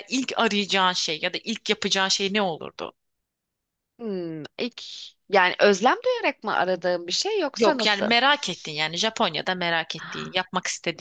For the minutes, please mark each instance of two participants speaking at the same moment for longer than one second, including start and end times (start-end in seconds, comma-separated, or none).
none